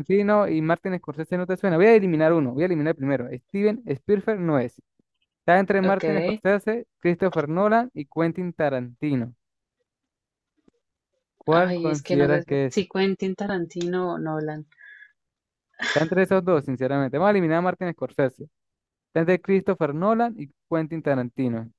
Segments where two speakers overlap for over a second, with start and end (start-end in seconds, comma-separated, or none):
11.5-12.8